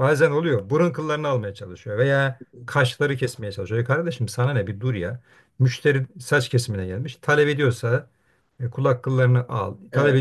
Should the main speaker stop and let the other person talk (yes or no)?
no